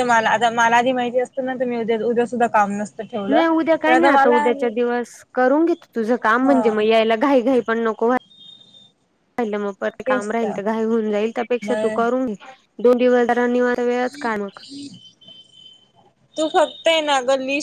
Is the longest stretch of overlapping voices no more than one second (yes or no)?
yes